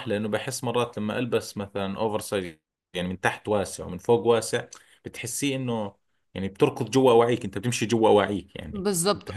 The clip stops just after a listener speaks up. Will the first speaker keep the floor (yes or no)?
no